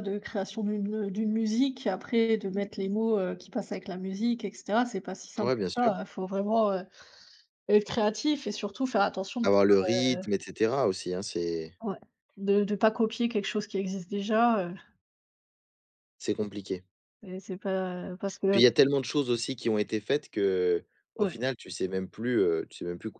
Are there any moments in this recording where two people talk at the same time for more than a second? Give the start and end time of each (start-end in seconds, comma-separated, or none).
none